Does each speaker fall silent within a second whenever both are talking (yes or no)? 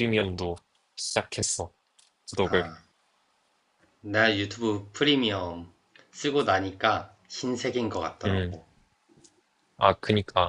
yes